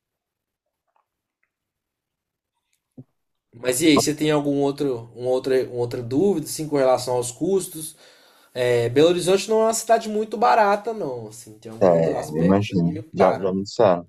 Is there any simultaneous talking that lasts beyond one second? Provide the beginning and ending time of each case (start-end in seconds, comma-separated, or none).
11.8-13.6